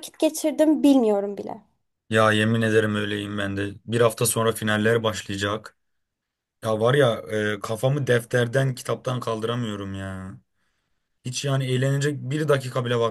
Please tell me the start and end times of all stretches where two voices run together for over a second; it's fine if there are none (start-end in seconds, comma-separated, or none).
none